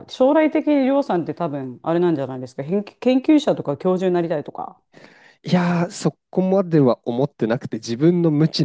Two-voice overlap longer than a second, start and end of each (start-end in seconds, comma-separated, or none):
none